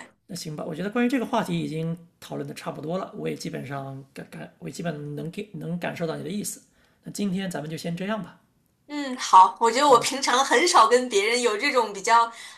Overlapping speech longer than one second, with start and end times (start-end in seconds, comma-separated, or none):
none